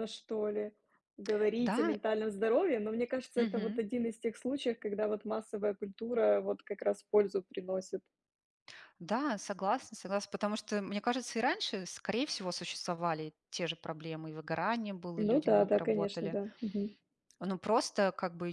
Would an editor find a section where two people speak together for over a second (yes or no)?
yes